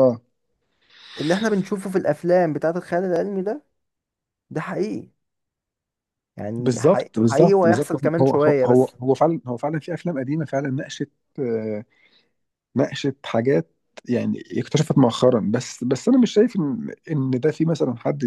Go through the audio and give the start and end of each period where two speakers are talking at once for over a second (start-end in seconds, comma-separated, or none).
6.6-8.9